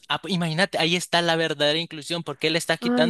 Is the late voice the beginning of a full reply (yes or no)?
no